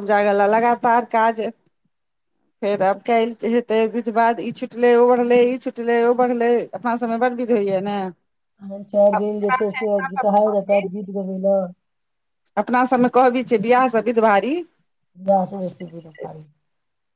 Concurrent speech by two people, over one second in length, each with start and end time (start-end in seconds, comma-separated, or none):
9.2-10.9